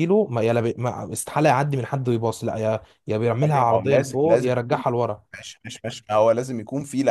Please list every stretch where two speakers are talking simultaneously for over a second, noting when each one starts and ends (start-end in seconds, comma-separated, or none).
3.4-4.8